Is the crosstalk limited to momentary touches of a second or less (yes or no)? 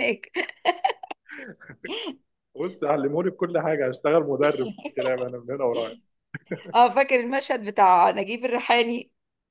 yes